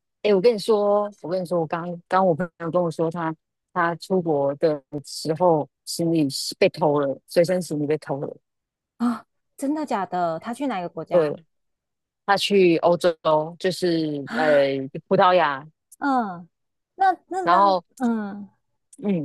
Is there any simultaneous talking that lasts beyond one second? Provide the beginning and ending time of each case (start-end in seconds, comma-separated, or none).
none